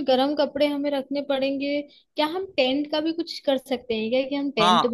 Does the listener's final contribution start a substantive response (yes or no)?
yes